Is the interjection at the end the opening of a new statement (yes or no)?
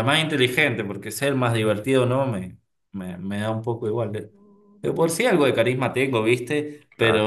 no